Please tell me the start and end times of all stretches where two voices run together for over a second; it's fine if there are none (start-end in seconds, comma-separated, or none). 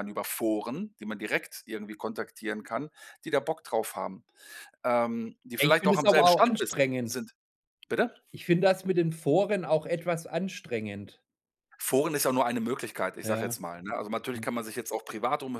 5.6-7.1